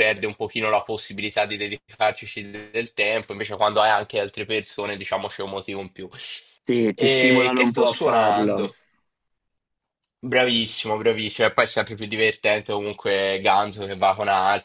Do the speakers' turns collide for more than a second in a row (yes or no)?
yes